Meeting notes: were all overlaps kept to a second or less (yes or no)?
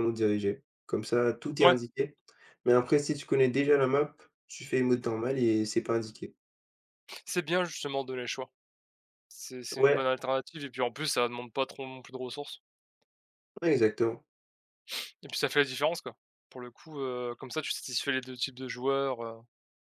yes